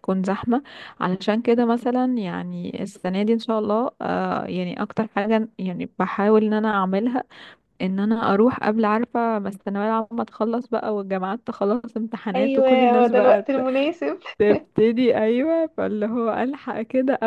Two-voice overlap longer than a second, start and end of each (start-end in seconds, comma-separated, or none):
12.3-13.6